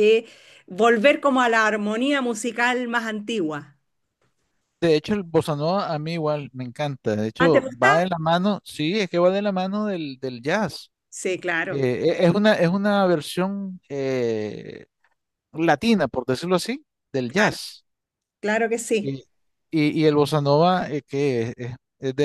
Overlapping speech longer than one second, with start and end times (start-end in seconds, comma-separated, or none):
none